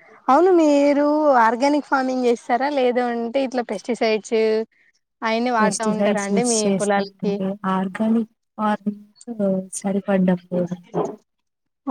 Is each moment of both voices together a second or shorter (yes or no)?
no